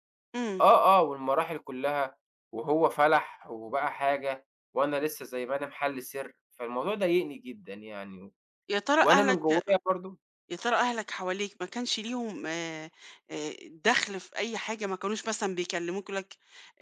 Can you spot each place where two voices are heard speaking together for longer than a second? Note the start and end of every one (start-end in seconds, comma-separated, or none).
none